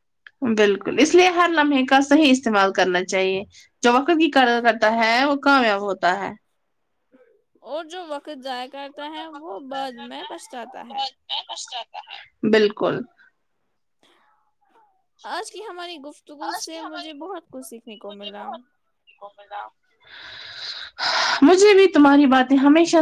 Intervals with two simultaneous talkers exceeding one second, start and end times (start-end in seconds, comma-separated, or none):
8.8-11.1, 16.5-18.5